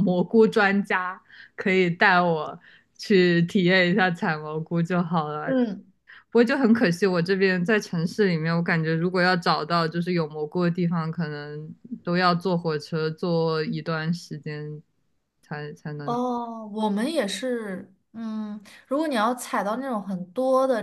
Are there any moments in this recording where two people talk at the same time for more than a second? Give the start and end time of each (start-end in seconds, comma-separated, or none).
none